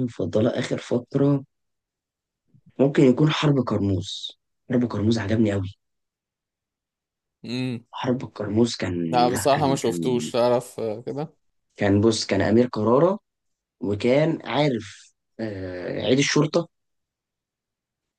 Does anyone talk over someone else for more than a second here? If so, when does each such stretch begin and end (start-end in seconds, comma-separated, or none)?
9.1-10.3